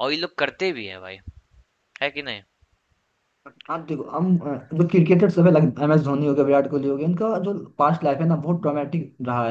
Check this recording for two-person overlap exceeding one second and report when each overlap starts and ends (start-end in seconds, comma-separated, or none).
none